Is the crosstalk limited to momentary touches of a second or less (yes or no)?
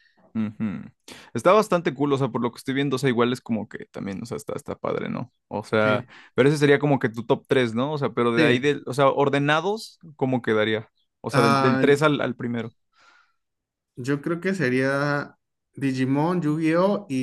yes